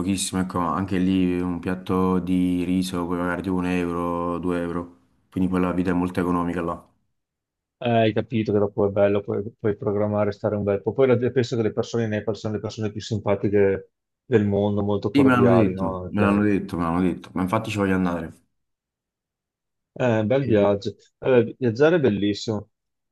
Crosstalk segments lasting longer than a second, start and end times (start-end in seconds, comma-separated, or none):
15.1-16.4